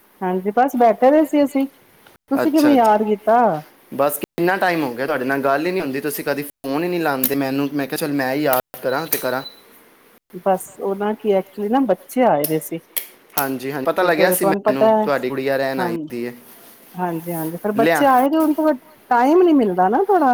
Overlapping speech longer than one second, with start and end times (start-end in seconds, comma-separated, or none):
13.4-15.1